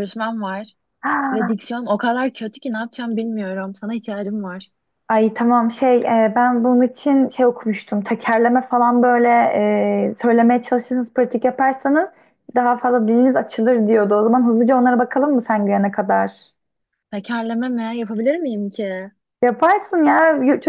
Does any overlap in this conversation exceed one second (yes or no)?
no